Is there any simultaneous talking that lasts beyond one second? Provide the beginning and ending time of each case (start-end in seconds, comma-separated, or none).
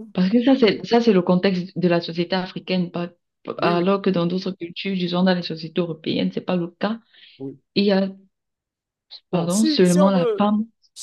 9.3-10.5